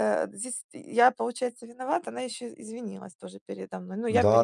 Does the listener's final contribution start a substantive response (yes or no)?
yes